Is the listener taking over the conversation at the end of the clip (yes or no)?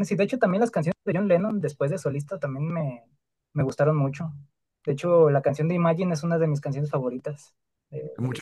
yes